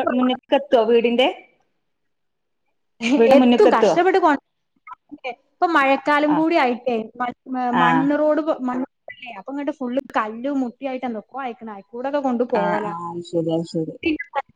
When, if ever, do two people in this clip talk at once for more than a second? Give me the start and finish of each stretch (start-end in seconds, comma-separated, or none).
none